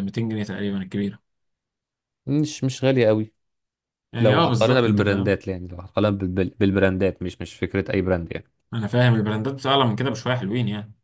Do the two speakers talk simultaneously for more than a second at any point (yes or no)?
yes